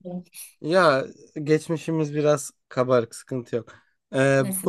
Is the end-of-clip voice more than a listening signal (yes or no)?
no